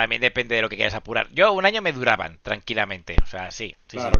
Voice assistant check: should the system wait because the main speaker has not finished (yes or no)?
yes